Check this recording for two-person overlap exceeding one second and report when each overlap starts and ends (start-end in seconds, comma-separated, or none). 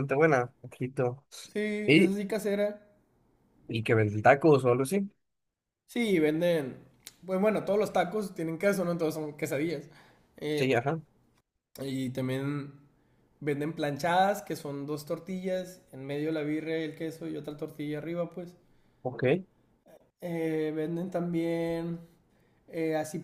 none